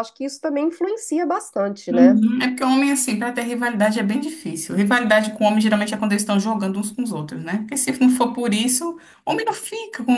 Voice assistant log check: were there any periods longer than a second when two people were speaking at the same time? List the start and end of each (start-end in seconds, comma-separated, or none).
none